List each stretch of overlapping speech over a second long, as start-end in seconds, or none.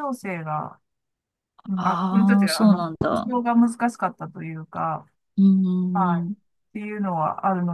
1.8-3.3